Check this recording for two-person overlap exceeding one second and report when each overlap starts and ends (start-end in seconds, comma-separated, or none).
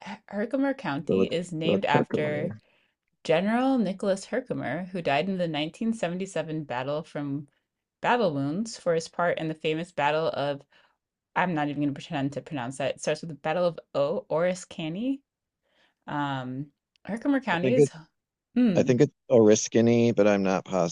1.1-2.5